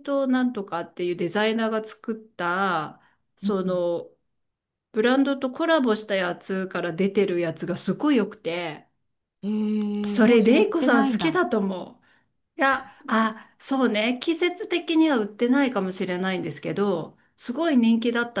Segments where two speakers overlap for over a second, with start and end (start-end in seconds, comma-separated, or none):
10.1-11.4